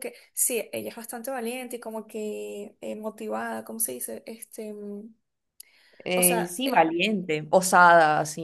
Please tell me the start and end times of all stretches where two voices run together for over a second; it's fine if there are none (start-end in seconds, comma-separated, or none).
none